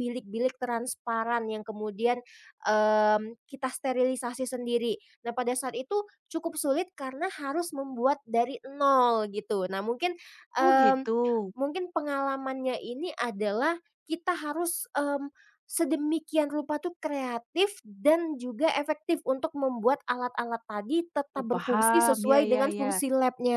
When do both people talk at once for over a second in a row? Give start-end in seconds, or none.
21.4-22.9